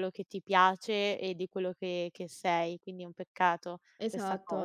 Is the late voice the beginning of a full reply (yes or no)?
yes